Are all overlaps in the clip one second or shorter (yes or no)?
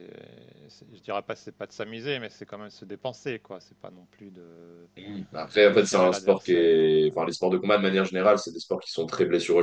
no